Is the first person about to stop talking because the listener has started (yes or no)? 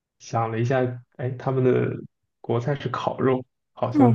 yes